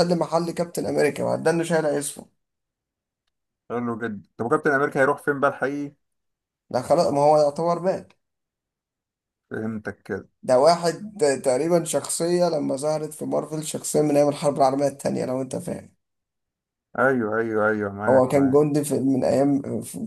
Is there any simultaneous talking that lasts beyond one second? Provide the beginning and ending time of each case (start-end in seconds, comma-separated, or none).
none